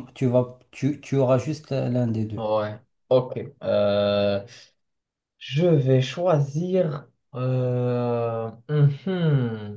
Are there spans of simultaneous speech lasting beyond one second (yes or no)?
no